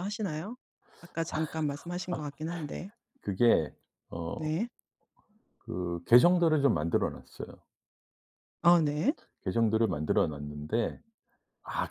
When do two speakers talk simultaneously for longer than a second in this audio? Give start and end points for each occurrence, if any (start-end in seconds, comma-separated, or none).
none